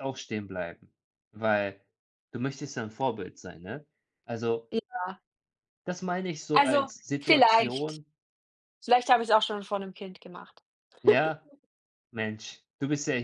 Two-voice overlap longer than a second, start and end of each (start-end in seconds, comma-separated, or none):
6.5-8.0